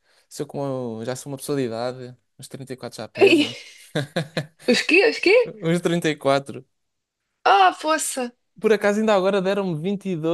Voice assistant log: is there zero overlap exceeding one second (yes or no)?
yes